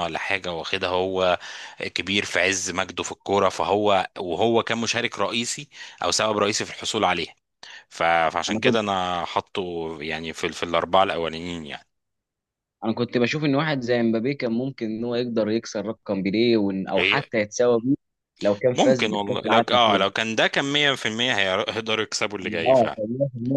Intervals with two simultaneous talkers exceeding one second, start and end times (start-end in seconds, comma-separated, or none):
18.8-20.0